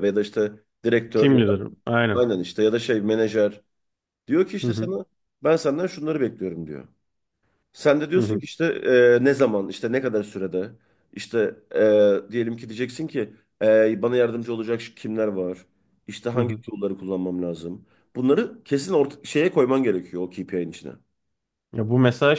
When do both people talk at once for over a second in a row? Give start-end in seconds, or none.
none